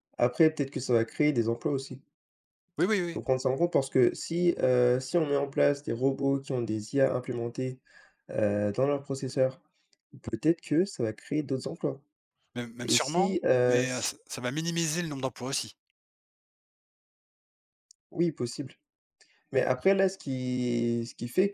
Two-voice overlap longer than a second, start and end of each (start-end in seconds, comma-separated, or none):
12.8-14.1